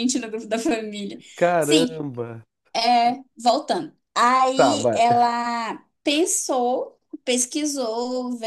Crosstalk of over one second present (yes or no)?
no